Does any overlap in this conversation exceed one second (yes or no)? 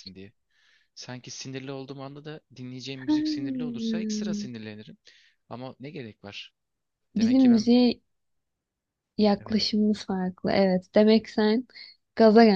yes